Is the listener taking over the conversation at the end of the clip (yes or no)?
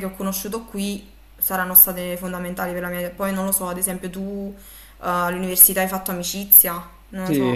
yes